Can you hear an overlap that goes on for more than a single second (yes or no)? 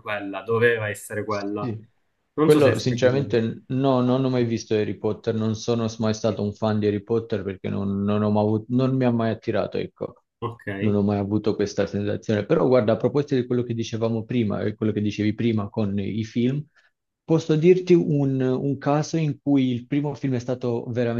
no